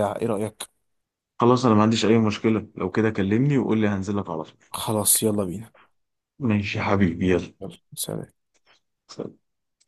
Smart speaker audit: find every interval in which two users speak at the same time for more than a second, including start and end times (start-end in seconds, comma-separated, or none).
none